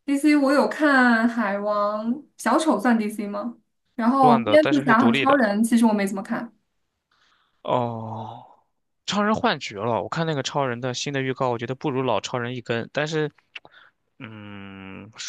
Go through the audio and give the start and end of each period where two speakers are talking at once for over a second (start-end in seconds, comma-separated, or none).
4.2-5.4